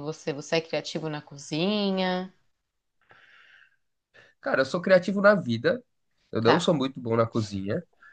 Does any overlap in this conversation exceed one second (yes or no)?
no